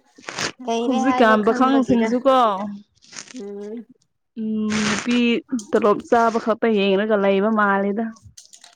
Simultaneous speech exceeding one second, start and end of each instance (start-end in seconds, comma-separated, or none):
0.8-2.1